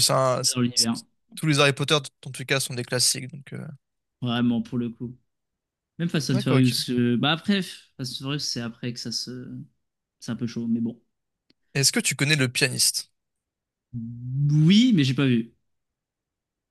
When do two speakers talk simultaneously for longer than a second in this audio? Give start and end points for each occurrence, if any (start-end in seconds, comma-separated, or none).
none